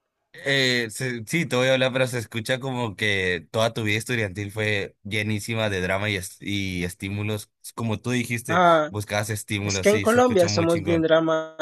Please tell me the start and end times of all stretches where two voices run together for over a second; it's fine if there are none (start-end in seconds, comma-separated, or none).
9.6-11.1